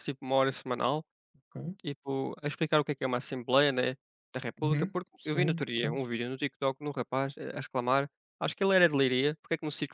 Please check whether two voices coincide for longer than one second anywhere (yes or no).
yes